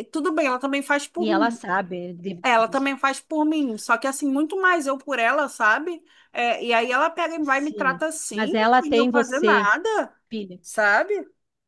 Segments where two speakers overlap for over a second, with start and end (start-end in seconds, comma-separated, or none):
7.4-9.7